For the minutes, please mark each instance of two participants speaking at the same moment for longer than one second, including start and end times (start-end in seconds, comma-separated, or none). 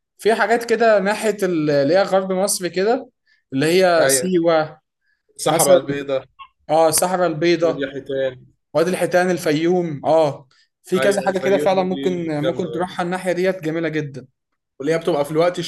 11.0-12.9